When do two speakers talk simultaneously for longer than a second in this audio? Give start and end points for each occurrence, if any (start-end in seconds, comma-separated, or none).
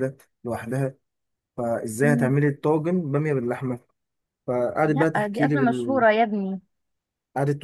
4.8-6.0